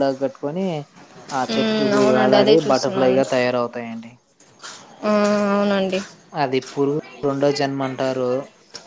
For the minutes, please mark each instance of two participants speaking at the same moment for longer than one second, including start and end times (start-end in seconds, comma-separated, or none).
1.5-3.2